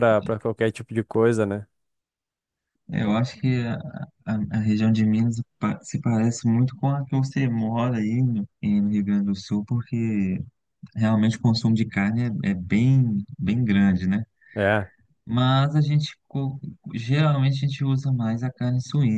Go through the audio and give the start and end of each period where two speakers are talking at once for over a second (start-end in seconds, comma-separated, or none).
none